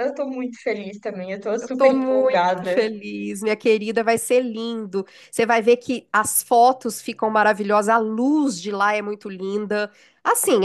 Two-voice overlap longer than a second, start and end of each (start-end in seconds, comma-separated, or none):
1.6-2.9